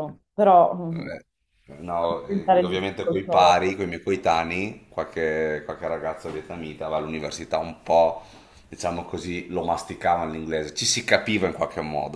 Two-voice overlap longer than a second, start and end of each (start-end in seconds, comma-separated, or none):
2.0-3.6